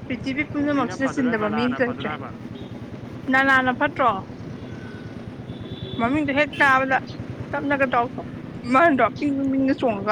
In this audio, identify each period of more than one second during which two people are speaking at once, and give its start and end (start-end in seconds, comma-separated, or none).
0.6-2.1